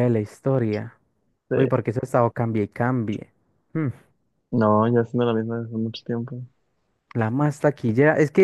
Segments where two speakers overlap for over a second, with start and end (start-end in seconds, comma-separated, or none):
none